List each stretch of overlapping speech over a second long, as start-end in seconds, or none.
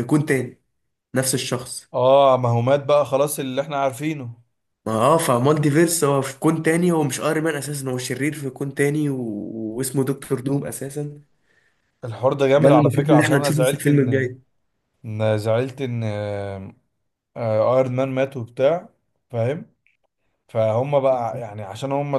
12.6-14.3